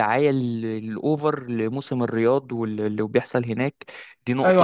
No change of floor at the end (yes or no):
no